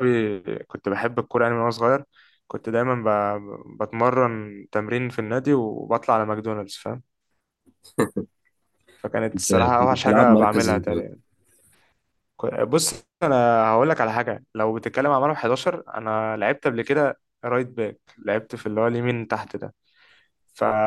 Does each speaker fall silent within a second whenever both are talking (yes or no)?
no